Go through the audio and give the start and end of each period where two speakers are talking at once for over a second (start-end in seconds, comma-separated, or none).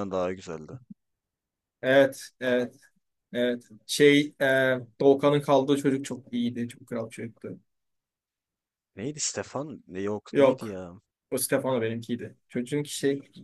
none